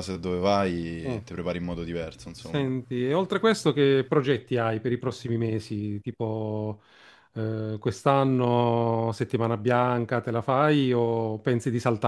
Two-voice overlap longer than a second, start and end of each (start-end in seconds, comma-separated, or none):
none